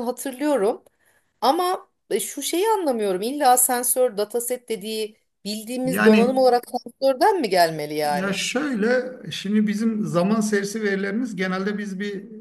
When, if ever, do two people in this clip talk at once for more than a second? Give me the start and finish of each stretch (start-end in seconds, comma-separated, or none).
none